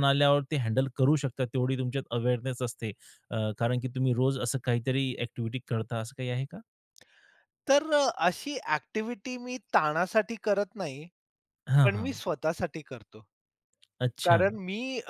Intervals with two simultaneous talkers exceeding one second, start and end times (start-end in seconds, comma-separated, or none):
none